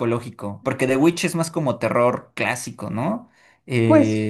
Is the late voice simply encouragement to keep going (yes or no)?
no